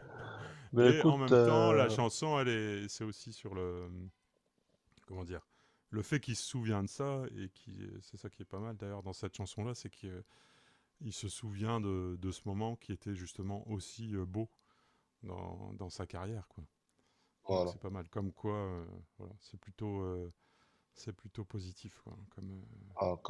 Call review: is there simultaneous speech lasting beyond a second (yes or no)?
yes